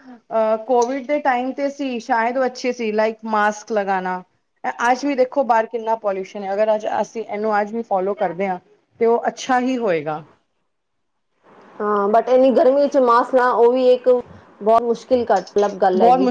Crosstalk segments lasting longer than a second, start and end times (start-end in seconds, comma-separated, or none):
none